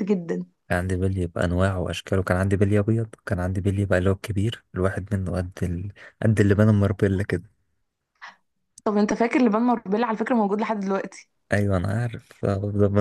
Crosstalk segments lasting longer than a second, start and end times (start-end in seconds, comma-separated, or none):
none